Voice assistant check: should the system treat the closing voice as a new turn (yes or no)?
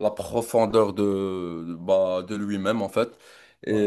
no